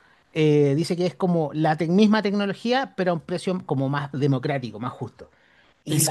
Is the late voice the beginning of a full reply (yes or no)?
yes